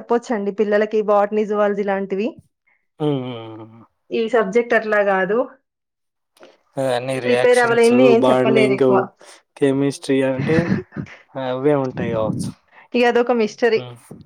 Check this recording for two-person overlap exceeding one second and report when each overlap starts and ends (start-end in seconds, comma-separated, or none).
7.3-8.8